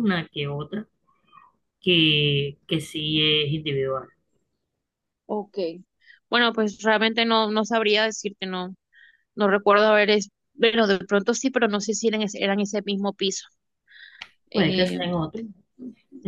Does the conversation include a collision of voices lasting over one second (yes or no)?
no